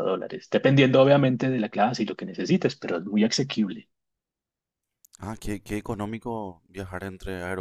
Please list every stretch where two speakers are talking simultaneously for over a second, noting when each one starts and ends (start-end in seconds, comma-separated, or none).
none